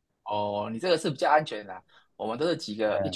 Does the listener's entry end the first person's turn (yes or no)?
no